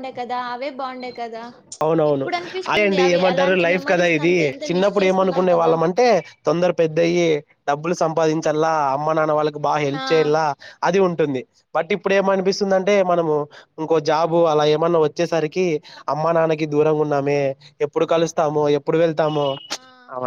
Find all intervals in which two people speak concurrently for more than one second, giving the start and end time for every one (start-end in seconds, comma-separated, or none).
3.3-5.7